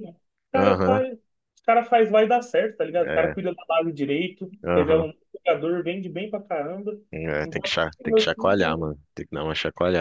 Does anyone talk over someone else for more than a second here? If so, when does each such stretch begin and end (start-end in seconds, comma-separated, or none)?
7.4-8.9